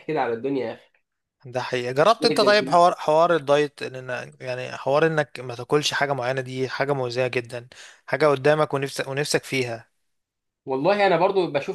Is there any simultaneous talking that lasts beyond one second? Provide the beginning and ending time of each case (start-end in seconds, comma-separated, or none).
none